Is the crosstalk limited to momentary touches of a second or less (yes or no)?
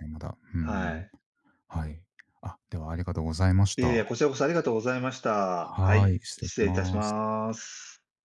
no